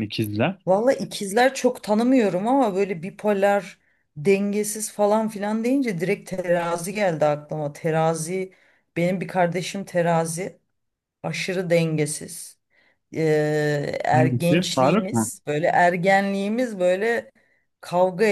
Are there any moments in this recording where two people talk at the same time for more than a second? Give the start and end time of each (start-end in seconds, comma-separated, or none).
14.1-15.3